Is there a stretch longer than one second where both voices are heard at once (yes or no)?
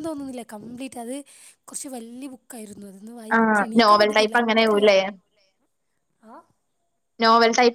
yes